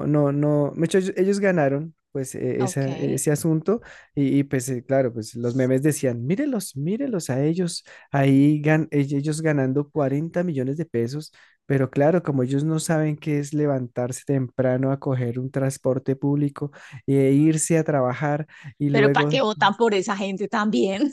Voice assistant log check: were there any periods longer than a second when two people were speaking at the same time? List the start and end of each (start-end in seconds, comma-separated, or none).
none